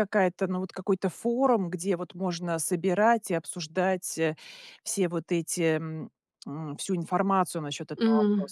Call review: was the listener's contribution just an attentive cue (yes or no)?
no